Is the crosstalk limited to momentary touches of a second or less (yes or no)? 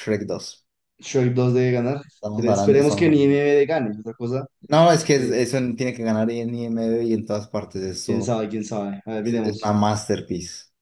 no